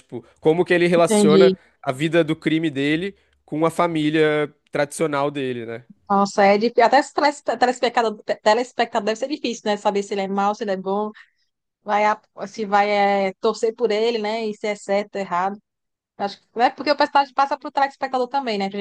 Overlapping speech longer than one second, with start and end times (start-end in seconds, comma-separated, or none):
none